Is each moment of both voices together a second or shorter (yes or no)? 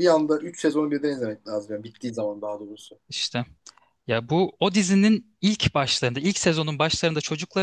yes